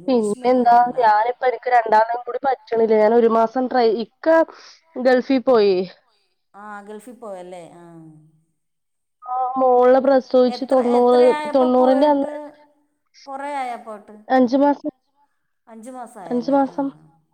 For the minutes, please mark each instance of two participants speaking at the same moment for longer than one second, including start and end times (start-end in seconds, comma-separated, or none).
none